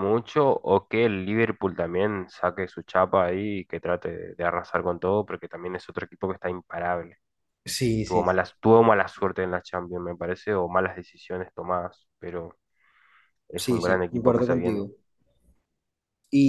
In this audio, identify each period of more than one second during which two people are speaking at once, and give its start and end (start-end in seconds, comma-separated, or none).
13.6-14.8